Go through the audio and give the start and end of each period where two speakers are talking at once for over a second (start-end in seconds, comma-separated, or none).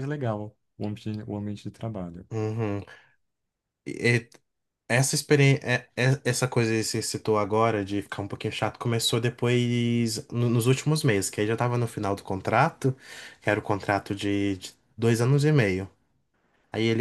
none